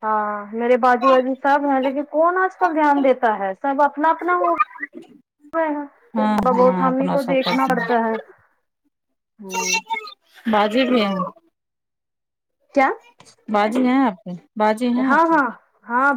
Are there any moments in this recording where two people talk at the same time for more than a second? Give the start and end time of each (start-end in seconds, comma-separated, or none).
6.2-8.2